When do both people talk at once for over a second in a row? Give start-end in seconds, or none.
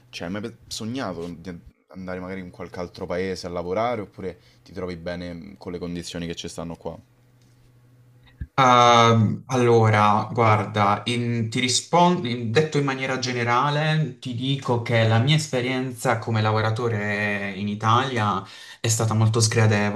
none